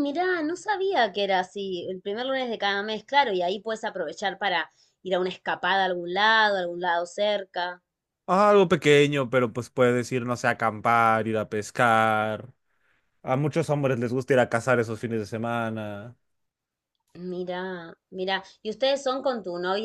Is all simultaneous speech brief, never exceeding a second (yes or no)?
yes